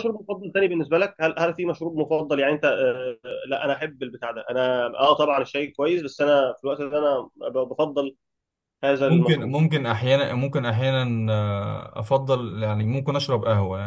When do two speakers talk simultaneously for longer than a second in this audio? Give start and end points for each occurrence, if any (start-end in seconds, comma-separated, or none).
none